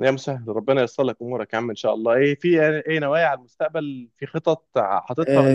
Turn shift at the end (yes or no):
yes